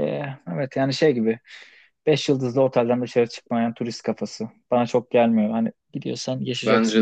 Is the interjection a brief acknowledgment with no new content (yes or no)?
no